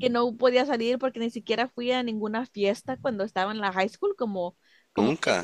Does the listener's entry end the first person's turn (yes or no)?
no